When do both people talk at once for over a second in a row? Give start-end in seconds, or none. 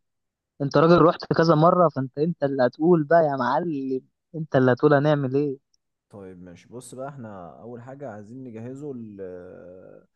none